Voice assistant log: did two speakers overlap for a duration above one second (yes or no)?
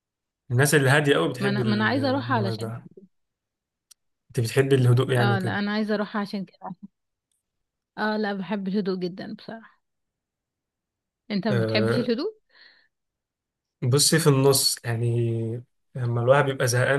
yes